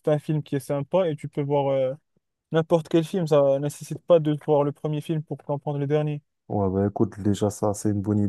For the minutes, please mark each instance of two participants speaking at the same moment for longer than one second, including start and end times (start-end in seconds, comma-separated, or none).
none